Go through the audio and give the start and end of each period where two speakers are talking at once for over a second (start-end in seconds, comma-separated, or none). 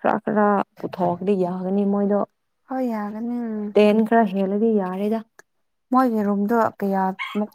none